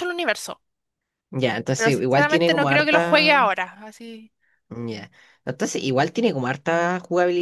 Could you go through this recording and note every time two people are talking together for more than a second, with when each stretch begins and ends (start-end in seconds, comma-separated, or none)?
1.8-3.5